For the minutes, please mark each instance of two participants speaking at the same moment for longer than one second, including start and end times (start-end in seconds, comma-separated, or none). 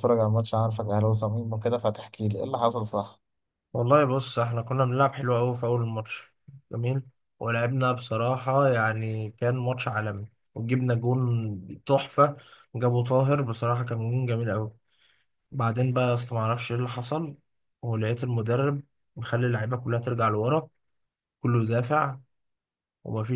none